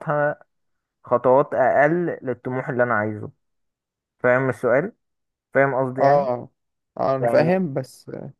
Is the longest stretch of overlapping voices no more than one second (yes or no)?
yes